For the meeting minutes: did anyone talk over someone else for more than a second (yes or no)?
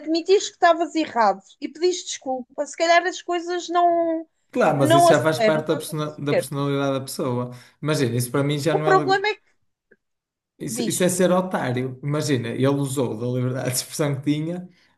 yes